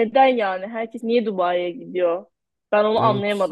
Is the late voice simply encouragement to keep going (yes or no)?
yes